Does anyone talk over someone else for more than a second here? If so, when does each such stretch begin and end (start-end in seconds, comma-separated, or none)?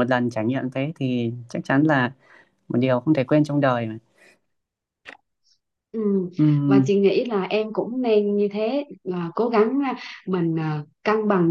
none